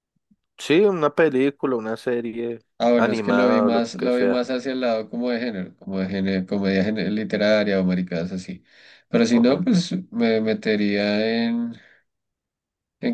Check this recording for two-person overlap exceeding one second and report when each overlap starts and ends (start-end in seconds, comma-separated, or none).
3.0-4.5